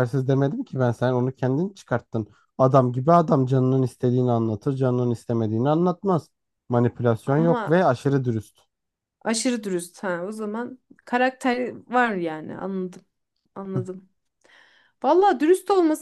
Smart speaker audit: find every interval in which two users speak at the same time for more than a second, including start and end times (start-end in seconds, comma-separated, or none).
none